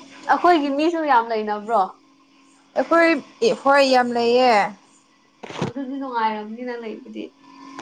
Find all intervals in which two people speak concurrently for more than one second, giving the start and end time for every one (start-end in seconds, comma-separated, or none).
none